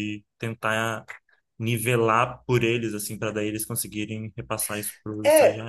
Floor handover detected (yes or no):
yes